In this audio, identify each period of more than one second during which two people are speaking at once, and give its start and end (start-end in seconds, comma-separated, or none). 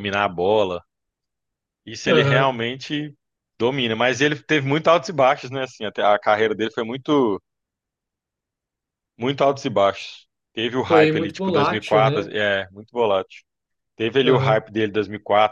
10.9-12.3